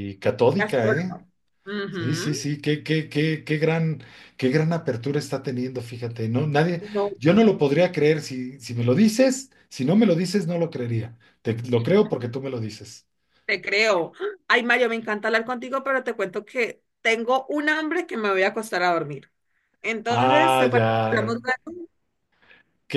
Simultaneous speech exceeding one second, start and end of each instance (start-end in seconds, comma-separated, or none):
20.1-21.3